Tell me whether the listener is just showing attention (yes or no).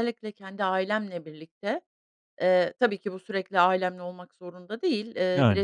yes